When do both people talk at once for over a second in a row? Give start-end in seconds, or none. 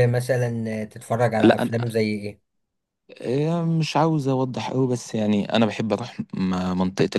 none